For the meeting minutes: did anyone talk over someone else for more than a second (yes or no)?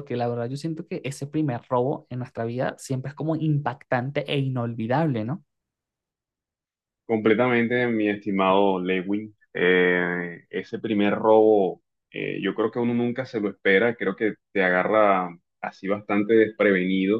no